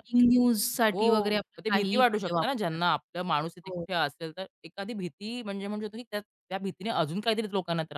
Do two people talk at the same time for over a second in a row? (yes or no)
yes